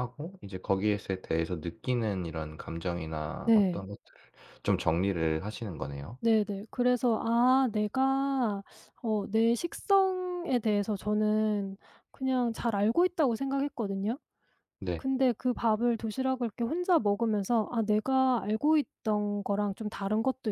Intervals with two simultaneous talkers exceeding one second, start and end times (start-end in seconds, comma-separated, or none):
none